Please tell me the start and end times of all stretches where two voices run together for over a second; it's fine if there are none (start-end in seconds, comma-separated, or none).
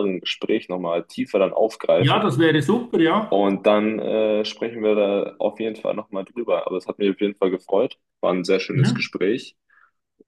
none